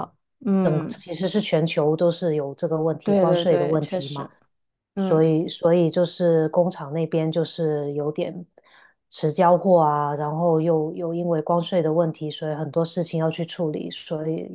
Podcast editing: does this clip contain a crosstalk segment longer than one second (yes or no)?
yes